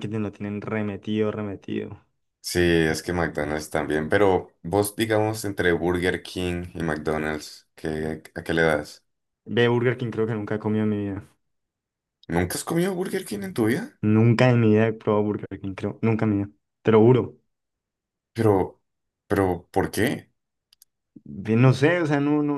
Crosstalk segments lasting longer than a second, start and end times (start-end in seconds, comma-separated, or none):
none